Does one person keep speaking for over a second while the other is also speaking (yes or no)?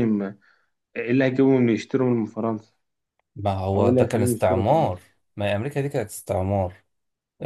yes